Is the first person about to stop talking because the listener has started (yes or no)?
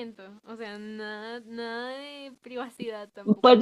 yes